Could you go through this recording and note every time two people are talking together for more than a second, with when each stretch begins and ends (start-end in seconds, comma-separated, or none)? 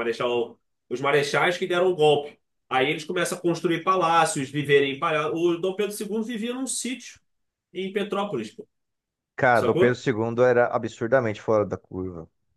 none